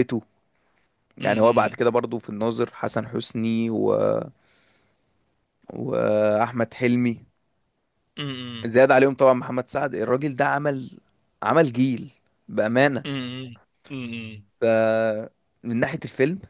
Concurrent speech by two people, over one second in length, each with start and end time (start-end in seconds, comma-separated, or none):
none